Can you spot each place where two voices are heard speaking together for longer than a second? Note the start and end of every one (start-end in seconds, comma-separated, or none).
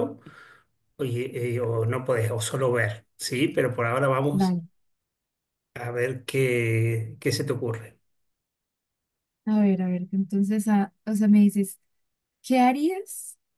none